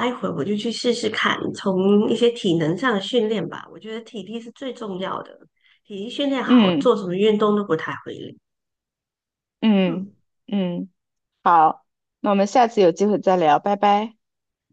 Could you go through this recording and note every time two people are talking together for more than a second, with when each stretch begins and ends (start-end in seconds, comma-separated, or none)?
none